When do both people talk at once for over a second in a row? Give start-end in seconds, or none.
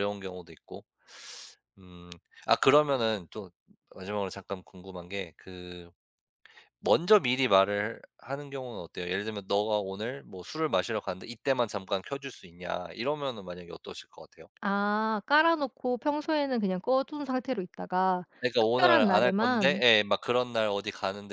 18.4-19.8